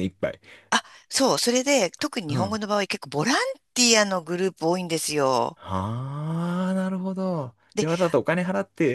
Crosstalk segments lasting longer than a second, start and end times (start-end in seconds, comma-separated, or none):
none